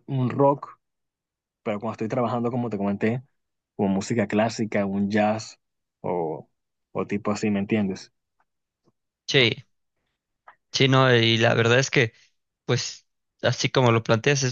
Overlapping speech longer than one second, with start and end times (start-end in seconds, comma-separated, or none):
none